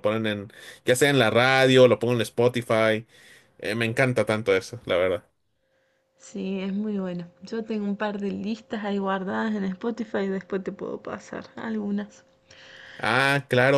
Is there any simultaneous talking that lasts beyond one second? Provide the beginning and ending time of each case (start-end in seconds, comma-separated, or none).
none